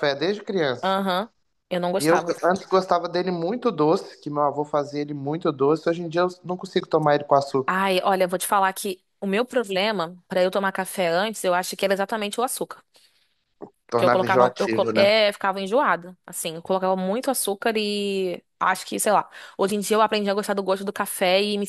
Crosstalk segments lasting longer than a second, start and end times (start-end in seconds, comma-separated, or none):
13.9-15.1